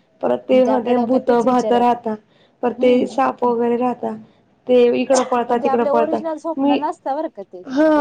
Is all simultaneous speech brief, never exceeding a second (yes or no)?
no